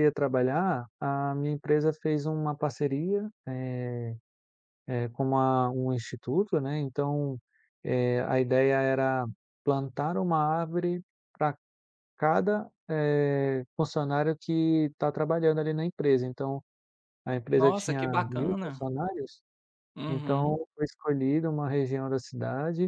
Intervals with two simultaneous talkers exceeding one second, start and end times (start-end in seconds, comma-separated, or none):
17.5-18.9